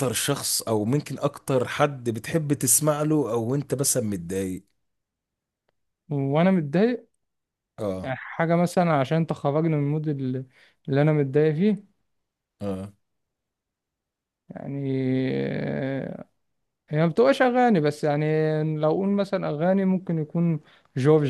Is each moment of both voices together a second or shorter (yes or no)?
yes